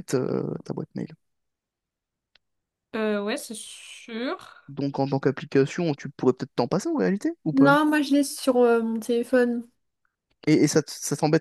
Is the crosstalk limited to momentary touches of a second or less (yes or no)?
yes